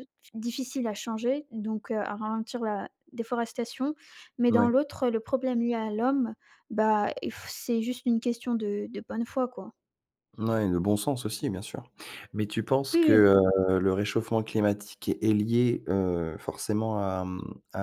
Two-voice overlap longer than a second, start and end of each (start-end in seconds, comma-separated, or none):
none